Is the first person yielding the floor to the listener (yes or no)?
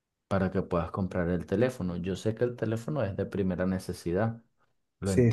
yes